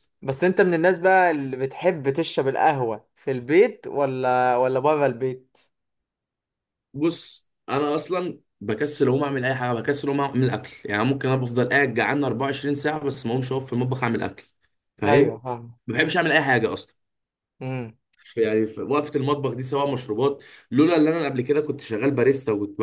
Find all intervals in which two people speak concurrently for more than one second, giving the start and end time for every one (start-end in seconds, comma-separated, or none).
none